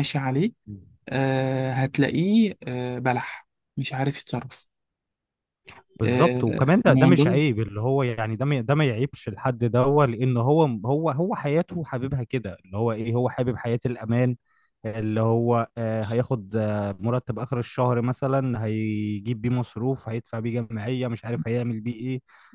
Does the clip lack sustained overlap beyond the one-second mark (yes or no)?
no